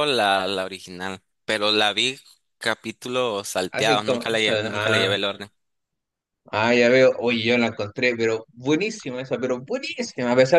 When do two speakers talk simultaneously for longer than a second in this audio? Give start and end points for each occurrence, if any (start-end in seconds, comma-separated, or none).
3.7-5.2